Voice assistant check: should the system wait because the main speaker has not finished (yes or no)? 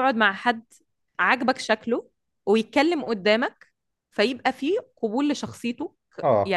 yes